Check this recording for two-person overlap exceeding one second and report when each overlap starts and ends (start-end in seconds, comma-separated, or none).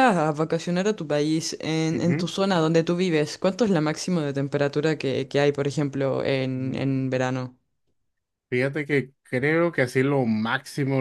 none